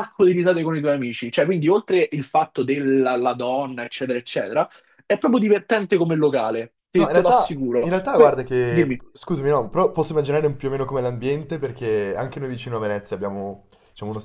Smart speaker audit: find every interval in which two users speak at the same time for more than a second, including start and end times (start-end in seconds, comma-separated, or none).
6.9-9.0